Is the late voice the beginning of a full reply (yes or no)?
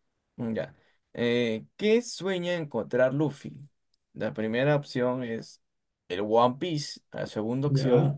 no